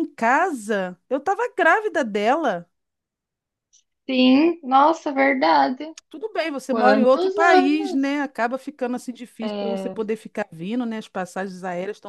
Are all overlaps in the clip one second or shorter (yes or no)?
no